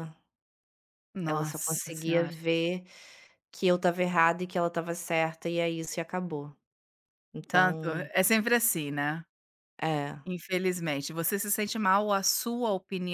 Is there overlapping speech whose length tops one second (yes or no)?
yes